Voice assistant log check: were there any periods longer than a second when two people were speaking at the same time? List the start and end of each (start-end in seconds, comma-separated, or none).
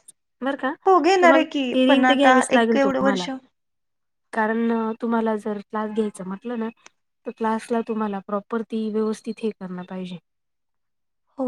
1.2-3.3